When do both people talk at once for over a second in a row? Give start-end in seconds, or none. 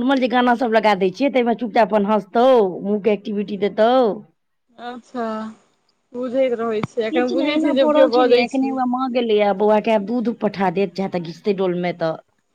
7.1-8.7